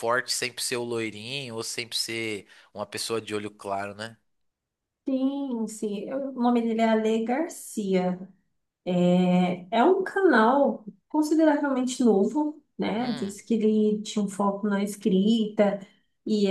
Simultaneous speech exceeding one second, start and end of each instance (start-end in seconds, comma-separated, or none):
none